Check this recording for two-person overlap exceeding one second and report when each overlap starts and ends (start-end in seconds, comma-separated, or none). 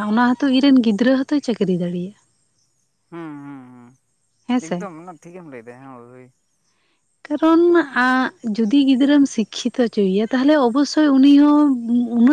none